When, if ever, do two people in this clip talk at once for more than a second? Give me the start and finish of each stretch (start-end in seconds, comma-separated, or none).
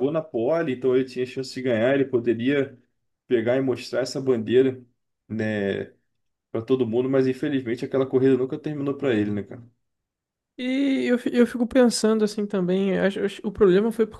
none